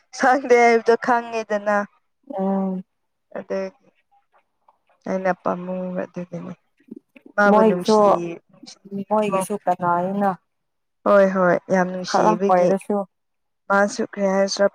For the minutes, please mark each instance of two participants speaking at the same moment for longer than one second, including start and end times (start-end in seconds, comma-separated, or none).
none